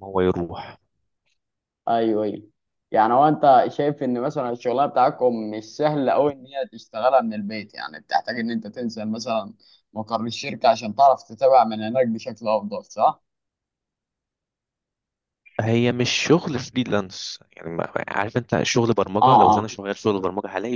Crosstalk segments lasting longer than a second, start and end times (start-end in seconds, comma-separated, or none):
none